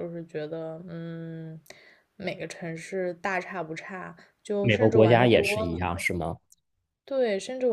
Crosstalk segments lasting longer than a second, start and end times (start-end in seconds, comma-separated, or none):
4.6-6.1